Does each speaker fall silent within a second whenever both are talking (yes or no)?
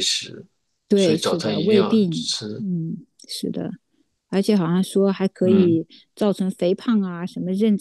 no